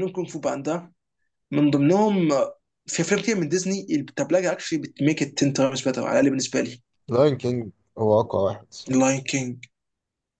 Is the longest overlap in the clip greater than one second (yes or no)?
no